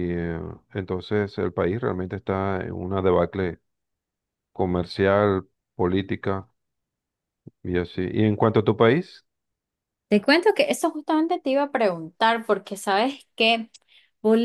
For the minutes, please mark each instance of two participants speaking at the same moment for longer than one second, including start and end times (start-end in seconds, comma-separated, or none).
none